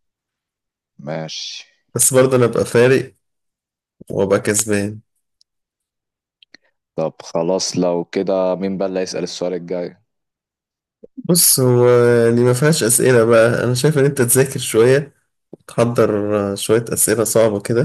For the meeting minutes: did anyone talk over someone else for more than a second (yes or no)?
no